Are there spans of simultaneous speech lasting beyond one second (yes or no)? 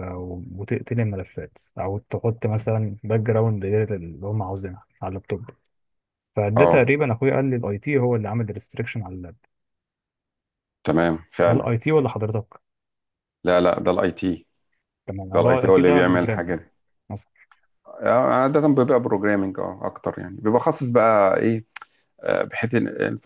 yes